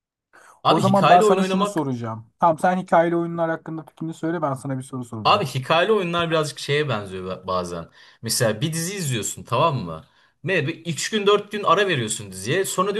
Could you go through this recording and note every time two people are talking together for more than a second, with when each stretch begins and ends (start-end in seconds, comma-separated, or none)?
0.7-1.9